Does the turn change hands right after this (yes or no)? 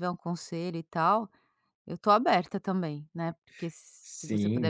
yes